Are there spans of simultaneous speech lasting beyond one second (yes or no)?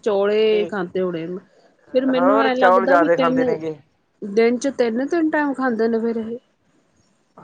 yes